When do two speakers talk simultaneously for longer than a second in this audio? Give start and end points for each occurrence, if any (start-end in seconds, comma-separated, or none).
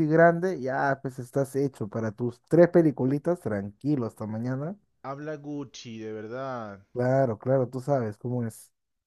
none